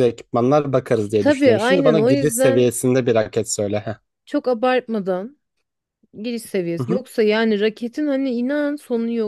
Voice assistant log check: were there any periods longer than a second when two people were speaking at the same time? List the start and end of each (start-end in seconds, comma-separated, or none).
1.2-2.8